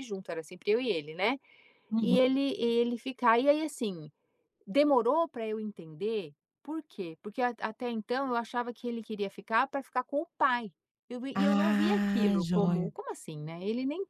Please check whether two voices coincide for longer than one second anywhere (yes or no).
yes